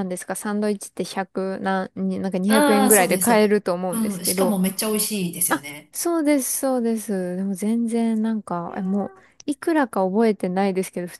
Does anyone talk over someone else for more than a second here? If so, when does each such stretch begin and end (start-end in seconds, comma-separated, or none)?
2.5-4.5